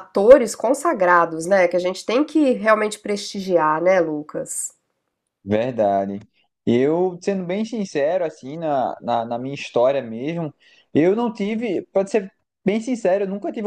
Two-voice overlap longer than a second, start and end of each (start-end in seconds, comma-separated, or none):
none